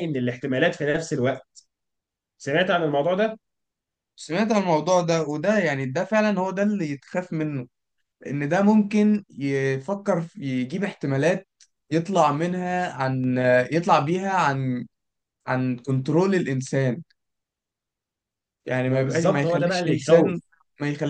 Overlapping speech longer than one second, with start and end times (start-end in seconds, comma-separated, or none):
18.9-20.4